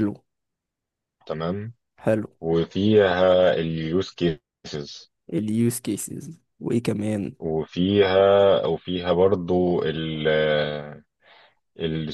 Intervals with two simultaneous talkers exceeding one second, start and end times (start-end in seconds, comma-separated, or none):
none